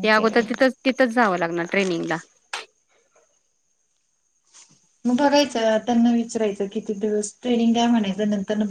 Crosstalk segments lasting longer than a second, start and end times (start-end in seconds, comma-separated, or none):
none